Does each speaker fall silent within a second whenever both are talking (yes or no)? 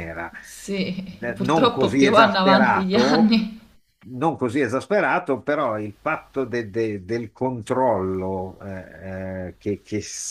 no